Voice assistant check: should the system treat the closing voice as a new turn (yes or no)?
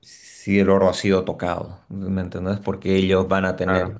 no